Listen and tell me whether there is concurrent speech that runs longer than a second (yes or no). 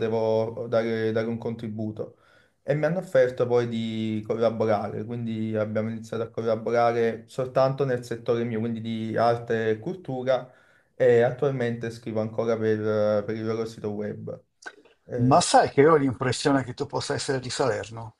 no